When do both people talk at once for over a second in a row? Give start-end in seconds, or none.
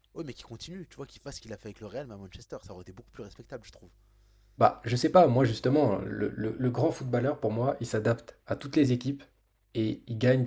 none